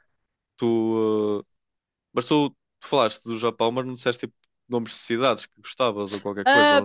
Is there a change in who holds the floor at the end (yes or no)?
yes